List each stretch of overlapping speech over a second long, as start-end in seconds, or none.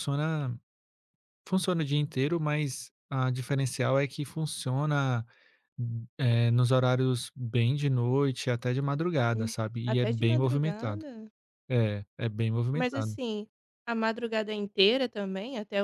9.3-11.0